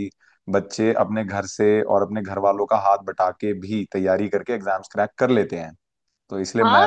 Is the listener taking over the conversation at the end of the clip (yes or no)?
yes